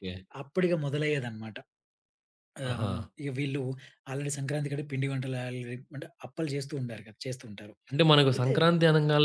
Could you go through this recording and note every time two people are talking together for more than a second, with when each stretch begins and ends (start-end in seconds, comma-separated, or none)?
none